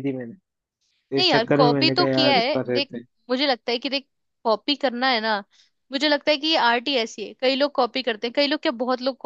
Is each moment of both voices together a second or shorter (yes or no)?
no